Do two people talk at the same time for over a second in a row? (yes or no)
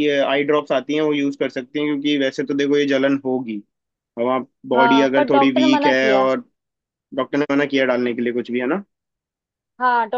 yes